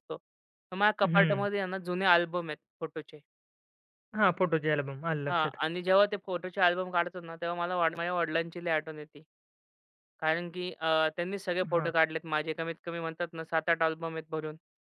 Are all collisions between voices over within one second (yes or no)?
yes